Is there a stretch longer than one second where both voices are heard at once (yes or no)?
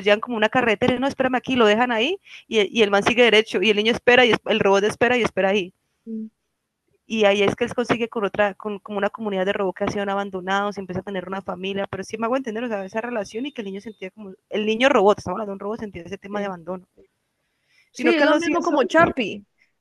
yes